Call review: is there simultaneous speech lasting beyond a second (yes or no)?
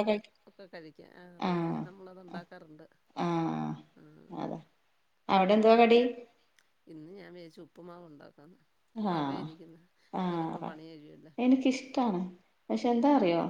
no